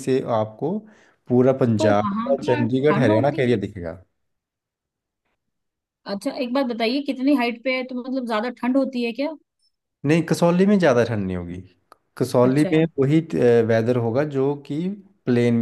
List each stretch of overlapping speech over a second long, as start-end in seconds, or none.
1.8-3.5